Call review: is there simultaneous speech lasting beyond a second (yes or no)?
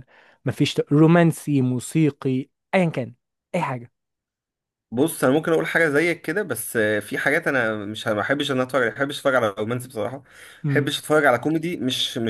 no